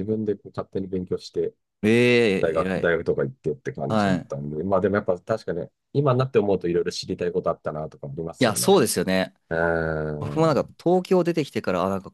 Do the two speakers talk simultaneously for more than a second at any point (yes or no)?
no